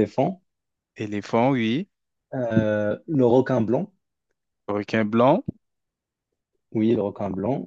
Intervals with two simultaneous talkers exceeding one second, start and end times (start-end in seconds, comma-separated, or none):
none